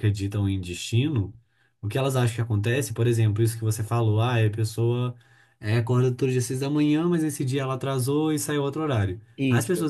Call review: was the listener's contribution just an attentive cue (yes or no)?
yes